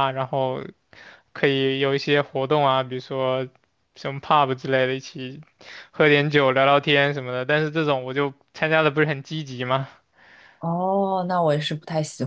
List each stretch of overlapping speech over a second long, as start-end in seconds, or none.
none